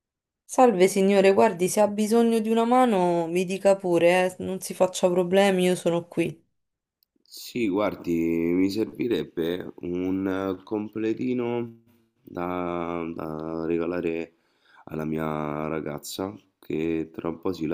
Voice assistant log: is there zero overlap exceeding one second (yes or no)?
yes